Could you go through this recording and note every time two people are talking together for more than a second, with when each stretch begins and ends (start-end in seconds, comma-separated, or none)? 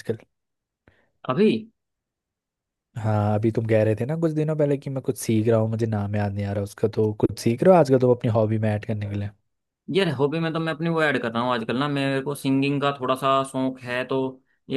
none